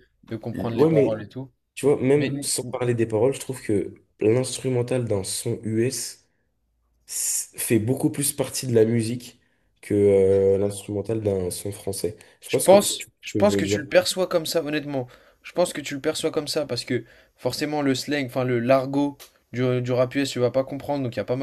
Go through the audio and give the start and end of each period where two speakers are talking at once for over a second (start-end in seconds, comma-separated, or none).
12.5-13.8